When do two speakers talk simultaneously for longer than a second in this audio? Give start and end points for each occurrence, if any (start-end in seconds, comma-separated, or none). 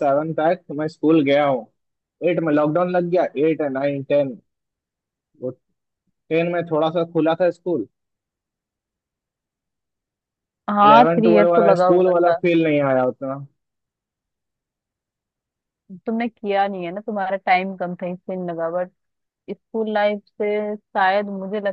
10.8-12.3